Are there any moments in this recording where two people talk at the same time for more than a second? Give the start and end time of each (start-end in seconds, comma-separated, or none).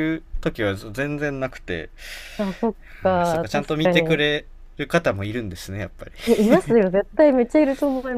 3.0-4.2